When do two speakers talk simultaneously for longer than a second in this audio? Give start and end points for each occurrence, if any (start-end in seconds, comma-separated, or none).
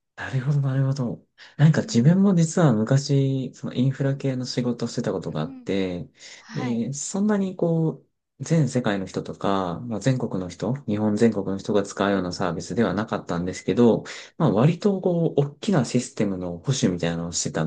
none